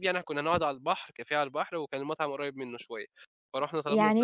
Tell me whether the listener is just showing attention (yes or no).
no